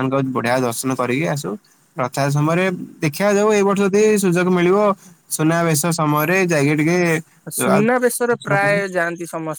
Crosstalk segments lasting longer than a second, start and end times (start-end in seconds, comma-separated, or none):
7.6-8.8